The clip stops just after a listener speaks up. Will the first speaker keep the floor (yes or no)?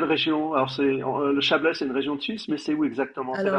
no